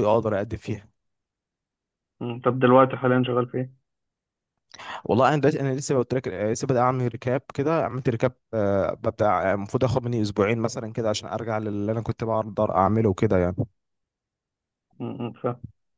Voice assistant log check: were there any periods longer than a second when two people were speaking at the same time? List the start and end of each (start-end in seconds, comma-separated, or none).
none